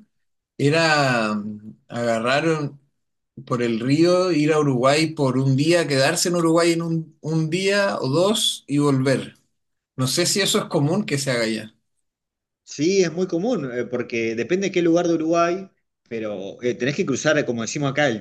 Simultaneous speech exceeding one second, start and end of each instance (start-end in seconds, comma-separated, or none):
none